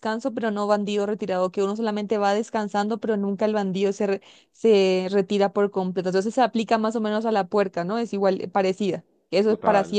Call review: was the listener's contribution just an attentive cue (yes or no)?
no